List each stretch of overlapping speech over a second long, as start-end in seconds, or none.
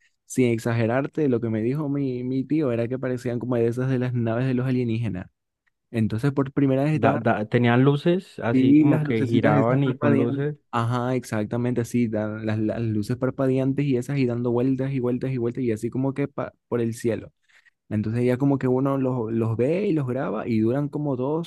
8.5-10.6